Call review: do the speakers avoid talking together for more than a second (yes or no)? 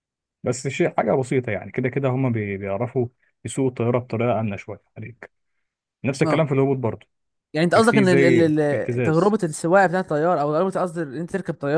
no